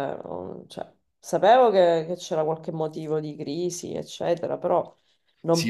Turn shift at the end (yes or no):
yes